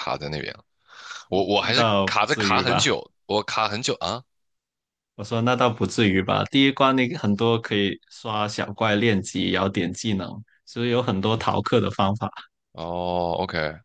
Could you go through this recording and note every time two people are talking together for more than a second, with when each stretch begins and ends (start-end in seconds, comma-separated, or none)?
1.6-3.0